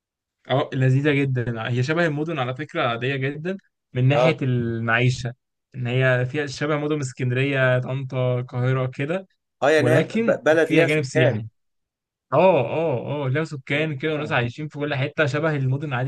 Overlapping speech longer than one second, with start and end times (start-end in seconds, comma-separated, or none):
9.8-11.4